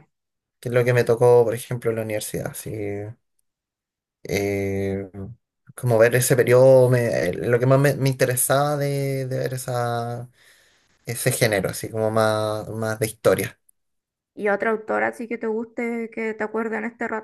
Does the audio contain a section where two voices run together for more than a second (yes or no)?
no